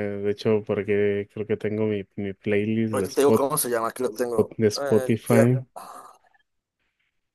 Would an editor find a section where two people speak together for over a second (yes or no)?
yes